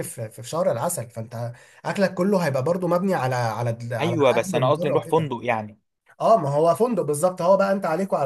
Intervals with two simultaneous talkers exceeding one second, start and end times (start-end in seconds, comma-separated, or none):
4.0-5.3